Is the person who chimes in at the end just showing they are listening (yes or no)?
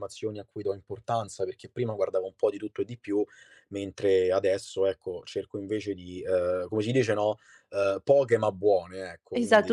no